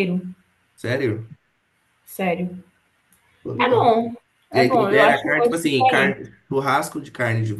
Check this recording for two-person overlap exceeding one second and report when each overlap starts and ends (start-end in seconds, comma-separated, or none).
4.5-6.2